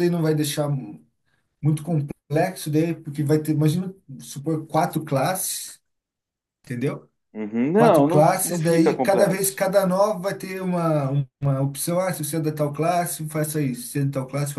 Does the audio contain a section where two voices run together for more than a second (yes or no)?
yes